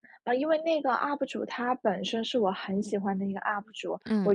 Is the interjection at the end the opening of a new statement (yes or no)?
no